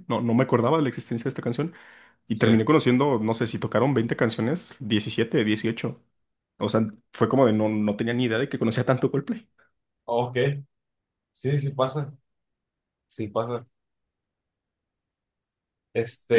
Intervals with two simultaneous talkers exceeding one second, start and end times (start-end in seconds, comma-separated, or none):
none